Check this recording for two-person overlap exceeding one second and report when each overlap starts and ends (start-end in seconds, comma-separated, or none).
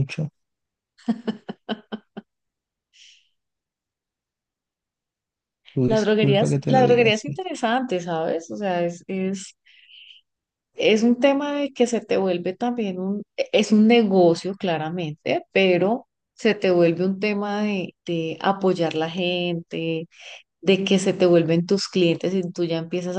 5.9-7.4